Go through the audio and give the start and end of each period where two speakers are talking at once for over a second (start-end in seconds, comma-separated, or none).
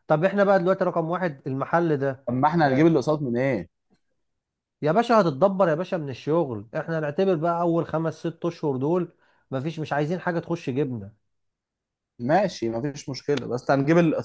none